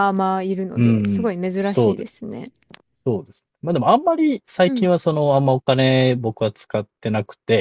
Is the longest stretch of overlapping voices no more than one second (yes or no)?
no